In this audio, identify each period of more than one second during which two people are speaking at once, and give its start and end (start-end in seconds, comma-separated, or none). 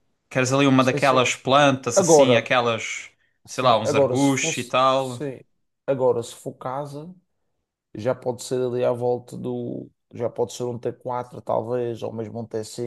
3.5-5.3